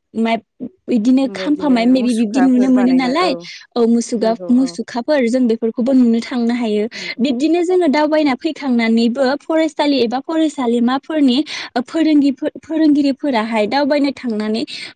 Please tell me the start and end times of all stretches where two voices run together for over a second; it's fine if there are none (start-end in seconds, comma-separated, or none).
1.3-3.1